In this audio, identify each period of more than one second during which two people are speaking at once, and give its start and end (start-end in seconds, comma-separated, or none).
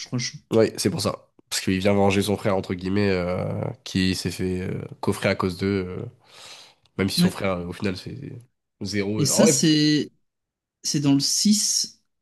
none